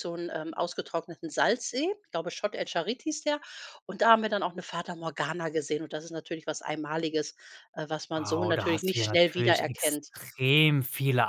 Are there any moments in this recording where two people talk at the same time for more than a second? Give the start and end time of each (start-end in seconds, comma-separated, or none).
8.1-10.1